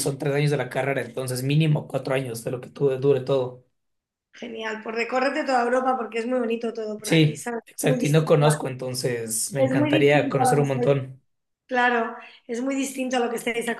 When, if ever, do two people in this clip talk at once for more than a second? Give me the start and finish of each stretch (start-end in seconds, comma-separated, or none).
7.0-8.6, 9.6-11.0